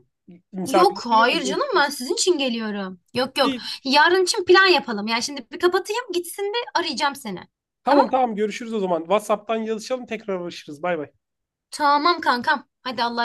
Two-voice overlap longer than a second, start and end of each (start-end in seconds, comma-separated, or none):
0.7-2.0